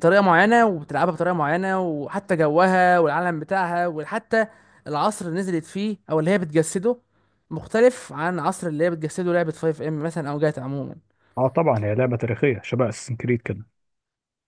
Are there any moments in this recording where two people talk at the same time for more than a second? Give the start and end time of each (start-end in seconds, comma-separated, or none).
none